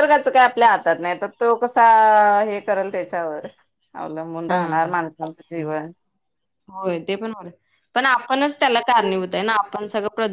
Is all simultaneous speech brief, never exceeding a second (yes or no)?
yes